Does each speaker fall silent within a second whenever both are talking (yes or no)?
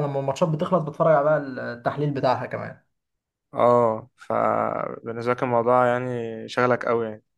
yes